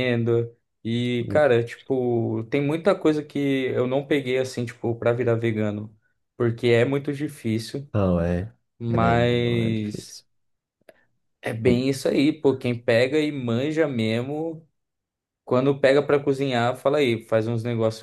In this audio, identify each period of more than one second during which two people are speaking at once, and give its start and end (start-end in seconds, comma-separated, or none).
8.8-10.2